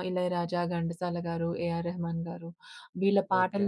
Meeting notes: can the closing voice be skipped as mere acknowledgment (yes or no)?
yes